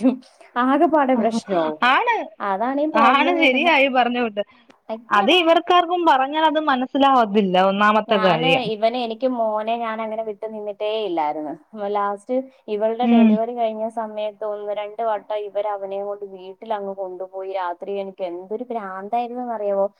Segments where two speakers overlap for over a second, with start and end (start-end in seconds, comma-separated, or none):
none